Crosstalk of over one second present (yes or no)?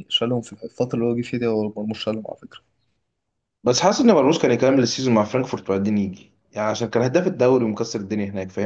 no